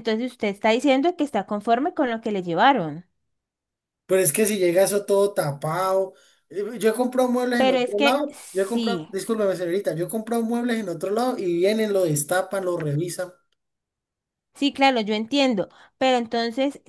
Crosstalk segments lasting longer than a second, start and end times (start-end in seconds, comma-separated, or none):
7.6-9.1